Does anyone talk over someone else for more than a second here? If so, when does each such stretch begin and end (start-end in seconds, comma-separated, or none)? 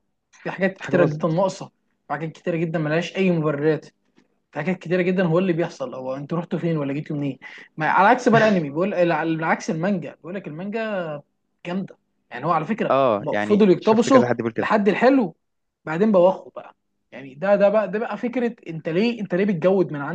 12.9-14.7